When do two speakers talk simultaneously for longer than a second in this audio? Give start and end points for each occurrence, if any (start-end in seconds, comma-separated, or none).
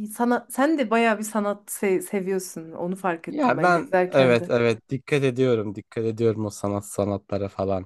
3.3-4.5